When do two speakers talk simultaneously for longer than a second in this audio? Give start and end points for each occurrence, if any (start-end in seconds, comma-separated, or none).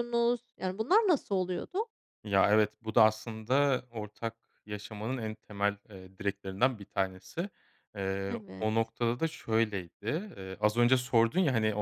none